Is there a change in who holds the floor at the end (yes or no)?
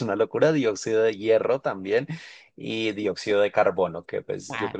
yes